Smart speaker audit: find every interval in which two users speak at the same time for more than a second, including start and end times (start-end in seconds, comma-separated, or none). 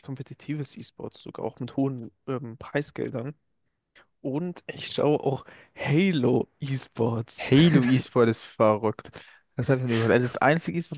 none